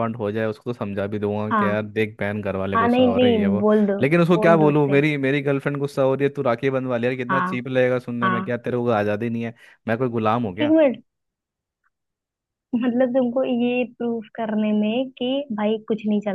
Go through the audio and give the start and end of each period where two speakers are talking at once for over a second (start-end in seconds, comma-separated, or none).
2.8-5.0